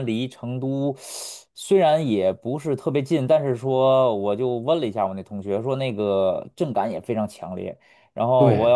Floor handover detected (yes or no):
no